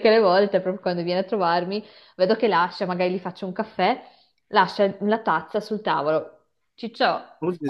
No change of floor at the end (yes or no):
yes